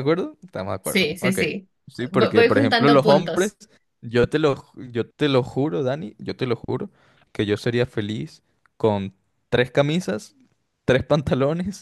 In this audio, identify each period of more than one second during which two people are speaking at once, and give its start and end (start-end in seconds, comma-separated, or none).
2.1-3.5